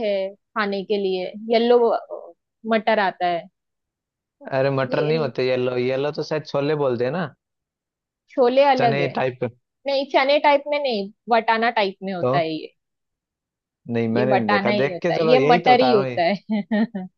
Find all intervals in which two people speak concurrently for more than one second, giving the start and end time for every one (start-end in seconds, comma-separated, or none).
14.2-16.2